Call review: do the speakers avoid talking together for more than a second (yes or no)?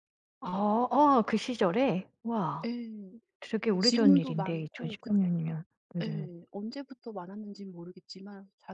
no